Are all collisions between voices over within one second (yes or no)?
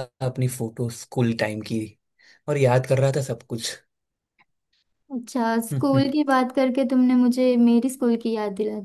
yes